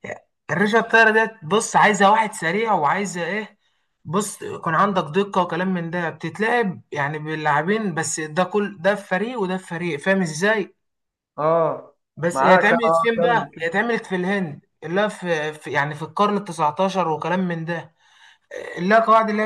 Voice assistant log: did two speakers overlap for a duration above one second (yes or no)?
yes